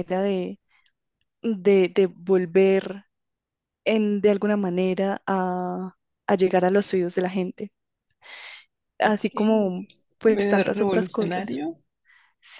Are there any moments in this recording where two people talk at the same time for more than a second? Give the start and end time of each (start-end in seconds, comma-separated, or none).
10.2-11.5